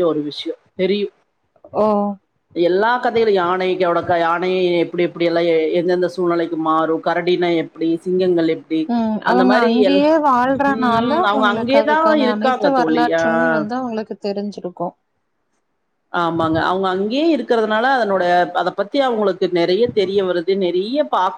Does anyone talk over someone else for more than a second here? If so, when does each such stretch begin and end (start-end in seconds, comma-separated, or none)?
10.7-13.5